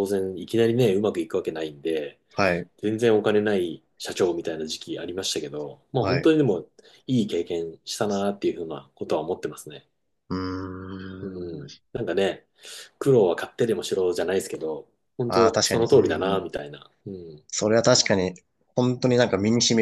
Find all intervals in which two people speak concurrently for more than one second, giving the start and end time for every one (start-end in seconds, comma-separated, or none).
15.3-16.5